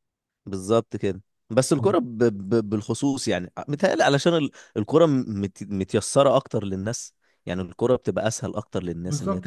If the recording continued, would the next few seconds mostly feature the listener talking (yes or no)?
yes